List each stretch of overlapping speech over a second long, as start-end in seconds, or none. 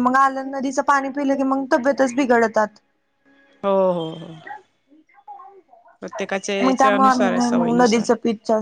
6.6-8.1